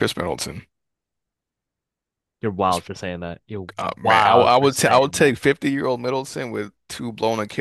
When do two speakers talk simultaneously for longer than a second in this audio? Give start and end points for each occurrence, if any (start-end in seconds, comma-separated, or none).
3.8-5.3